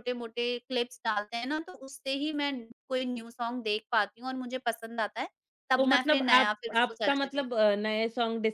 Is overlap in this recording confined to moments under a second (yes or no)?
no